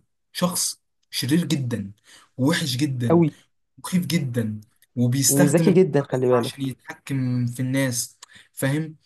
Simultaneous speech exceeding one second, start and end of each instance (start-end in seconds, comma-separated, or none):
5.3-6.7